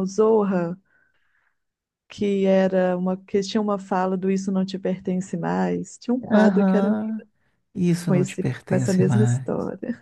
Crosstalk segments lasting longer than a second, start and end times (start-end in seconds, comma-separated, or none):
8.1-9.5